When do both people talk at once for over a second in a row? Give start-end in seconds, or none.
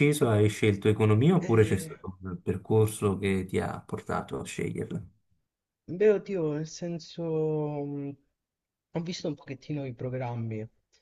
none